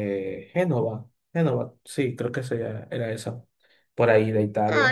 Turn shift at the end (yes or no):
yes